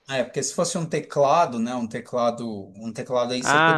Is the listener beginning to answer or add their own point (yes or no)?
yes